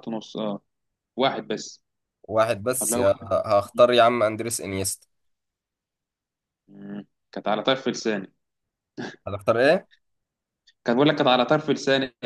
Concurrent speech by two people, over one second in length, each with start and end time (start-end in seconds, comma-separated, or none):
none